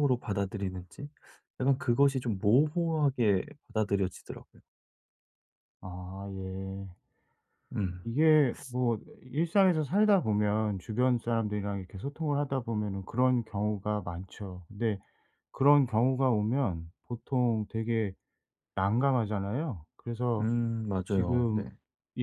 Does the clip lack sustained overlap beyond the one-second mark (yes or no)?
yes